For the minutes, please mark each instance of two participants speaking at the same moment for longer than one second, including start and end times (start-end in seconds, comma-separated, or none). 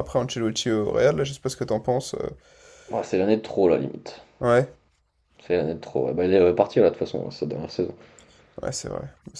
none